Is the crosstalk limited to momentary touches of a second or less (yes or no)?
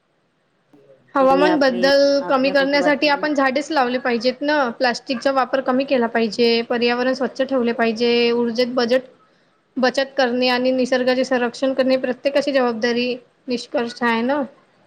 no